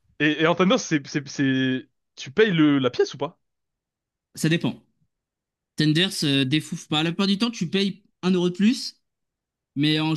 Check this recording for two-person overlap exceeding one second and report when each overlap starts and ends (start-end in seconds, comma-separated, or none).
none